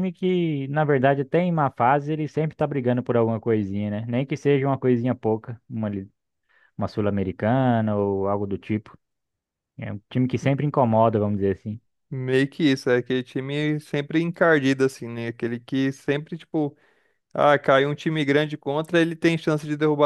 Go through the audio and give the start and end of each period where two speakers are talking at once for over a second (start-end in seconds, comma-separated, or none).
none